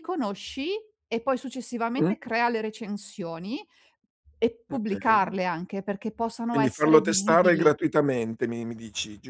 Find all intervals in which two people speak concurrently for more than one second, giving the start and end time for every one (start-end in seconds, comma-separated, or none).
6.5-7.7